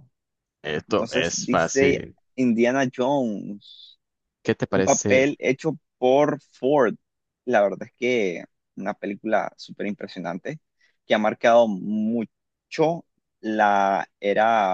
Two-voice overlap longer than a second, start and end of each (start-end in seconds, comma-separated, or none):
0.9-2.2